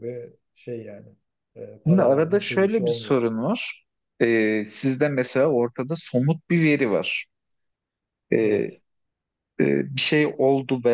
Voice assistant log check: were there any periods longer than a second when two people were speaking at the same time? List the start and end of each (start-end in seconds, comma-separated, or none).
1.9-3.2